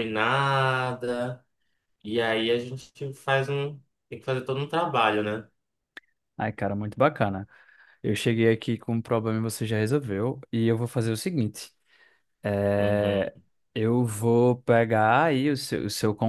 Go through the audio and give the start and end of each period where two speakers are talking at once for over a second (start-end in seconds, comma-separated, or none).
none